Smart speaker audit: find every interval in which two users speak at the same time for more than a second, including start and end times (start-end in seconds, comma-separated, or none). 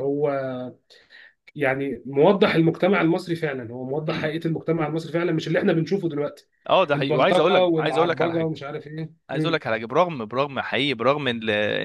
7.0-8.5